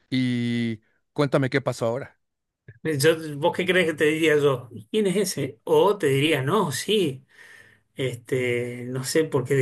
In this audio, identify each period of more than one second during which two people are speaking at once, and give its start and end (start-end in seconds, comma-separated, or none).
none